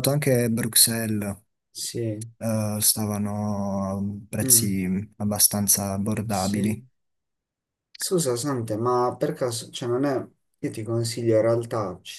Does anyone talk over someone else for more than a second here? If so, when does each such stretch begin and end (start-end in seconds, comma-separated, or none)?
none